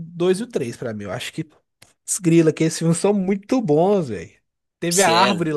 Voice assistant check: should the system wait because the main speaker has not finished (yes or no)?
yes